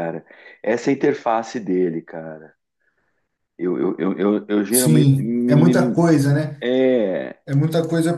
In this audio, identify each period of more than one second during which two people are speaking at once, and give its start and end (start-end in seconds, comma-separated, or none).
4.7-6.0